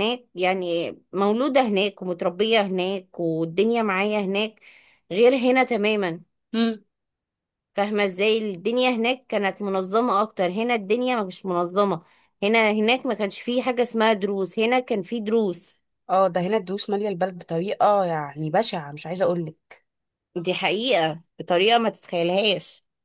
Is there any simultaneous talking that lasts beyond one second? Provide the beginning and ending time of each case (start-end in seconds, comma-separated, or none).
none